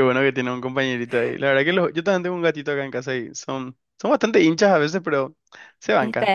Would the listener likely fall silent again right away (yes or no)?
no